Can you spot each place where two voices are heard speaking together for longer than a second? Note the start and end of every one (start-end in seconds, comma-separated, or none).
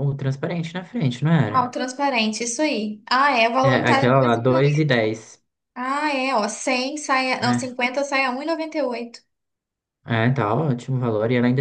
3.6-4.9